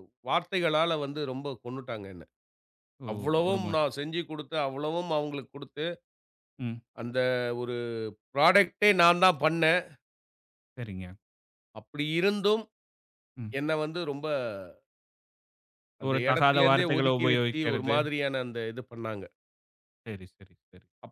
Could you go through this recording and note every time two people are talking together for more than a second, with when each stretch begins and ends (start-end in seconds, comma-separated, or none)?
16.1-17.9